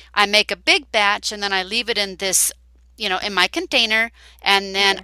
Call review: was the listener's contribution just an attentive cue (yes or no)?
yes